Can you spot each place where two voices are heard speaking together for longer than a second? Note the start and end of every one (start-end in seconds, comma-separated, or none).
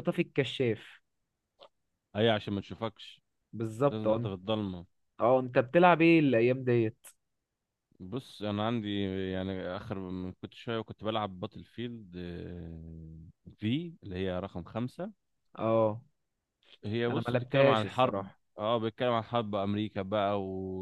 17.1-18.4